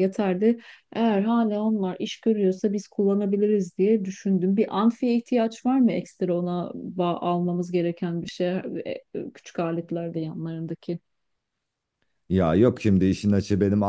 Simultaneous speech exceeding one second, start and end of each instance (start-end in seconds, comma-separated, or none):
none